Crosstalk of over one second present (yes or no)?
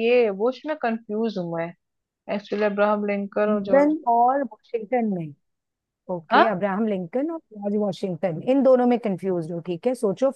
no